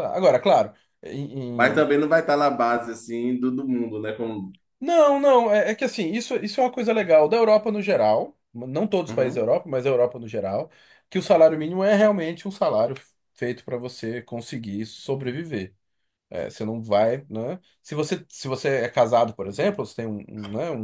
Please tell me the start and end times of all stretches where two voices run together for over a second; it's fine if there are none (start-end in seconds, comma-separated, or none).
none